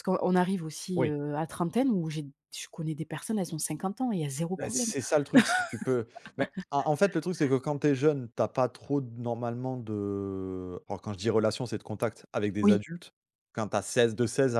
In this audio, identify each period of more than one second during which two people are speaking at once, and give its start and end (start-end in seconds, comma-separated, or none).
none